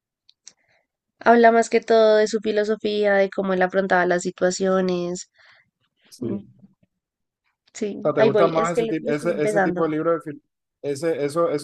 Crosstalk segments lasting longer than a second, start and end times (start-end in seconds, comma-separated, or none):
8.0-9.9